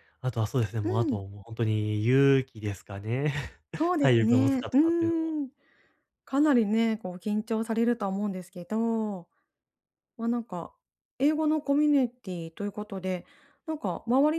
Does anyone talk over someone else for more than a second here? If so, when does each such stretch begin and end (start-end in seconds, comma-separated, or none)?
4.0-5.3